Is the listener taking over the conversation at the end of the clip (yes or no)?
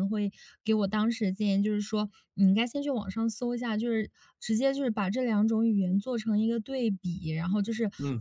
no